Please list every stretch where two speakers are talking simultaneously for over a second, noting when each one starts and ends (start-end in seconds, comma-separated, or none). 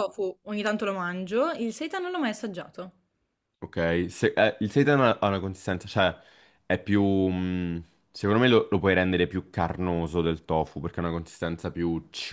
none